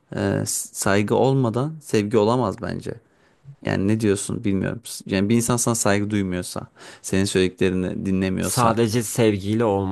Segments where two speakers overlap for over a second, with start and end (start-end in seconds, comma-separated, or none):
none